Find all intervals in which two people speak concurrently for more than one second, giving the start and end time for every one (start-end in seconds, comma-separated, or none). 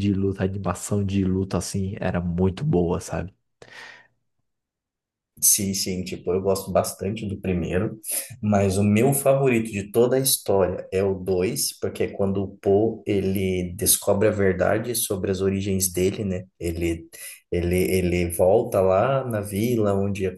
none